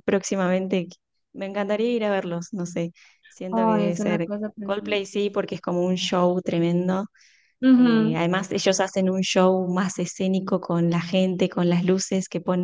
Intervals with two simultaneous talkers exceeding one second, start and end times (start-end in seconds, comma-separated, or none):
3.5-5.0